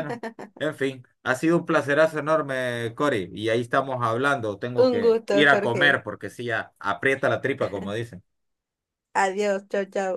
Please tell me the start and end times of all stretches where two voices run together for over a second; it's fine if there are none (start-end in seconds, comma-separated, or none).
4.8-6.0